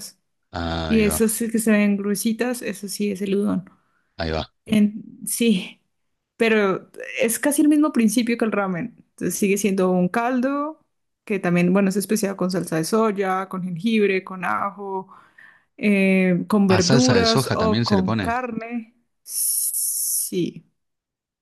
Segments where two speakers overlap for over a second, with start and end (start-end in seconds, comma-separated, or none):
16.7-18.4